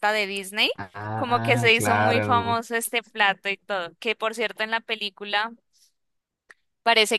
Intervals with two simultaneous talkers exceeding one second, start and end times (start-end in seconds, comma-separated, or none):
1.1-2.6